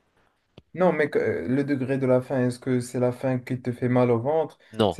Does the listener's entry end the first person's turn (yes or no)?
no